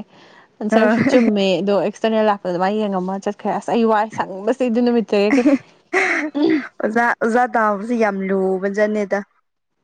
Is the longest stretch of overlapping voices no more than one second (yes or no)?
yes